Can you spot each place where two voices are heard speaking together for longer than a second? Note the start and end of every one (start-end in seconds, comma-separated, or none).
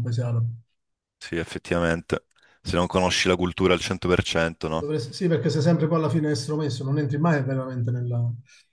none